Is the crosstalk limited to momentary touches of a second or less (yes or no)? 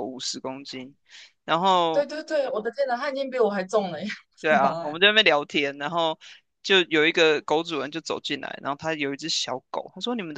yes